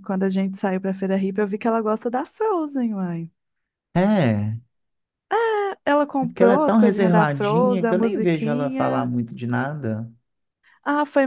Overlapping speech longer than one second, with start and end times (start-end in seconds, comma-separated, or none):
6.2-9.1